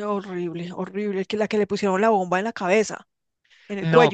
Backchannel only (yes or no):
no